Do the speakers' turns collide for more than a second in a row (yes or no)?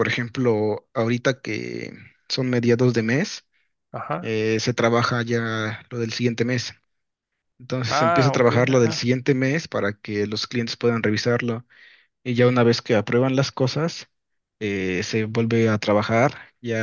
yes